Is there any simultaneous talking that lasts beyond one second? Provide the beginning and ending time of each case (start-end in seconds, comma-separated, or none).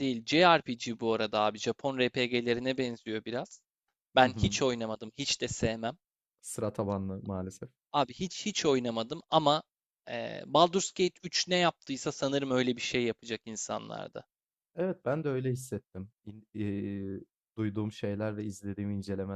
none